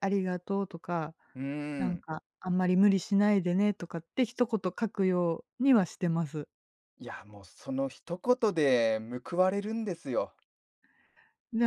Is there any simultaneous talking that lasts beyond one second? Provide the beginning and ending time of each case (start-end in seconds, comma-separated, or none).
none